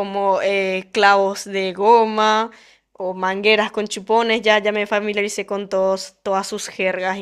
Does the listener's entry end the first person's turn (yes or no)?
no